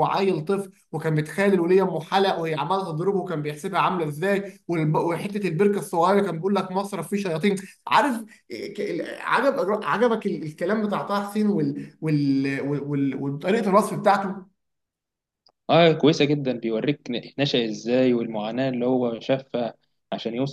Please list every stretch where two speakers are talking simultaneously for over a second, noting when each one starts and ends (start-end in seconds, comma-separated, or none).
none